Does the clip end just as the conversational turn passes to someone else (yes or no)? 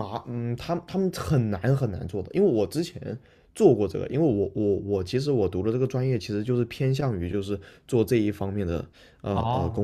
yes